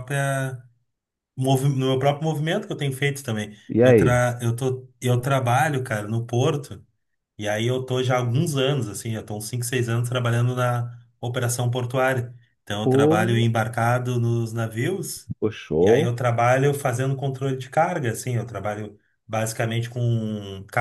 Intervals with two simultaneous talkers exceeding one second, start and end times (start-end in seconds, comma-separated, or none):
none